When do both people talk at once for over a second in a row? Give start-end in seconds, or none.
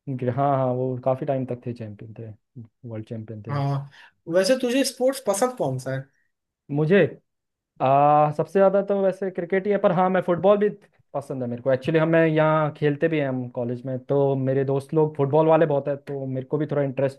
none